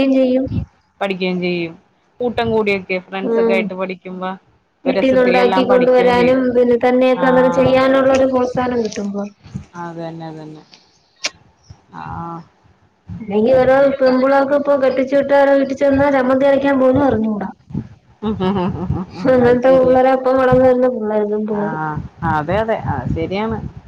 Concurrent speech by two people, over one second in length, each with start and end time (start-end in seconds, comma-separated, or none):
4.9-6.4